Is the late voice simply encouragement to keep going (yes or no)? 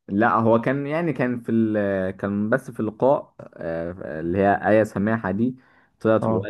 yes